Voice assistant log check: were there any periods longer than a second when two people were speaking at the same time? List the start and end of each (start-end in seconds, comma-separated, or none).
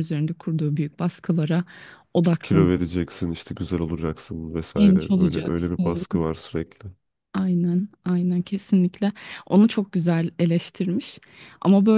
4.8-6.0